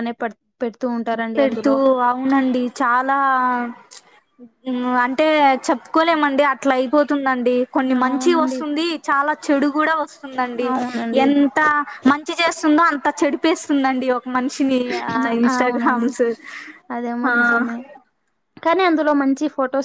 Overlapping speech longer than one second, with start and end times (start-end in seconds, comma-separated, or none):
none